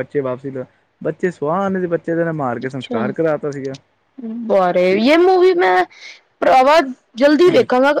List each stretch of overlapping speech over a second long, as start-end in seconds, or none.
none